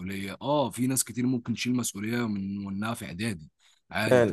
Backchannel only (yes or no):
yes